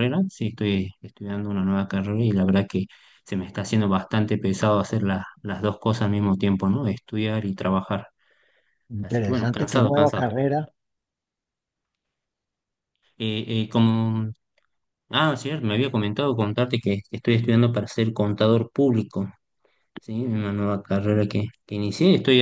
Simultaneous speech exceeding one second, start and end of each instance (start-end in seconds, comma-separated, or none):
9.0-10.2